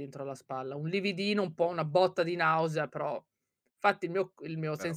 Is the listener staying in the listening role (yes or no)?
yes